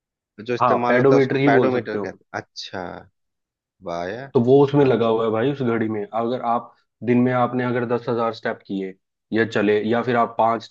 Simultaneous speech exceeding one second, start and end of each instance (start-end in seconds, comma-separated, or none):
0.6-2.2